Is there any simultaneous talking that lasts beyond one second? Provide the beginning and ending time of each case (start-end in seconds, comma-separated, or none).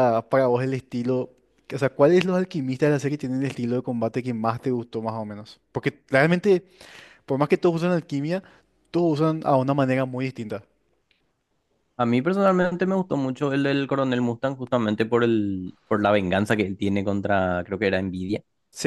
none